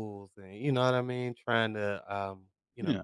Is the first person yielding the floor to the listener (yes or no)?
no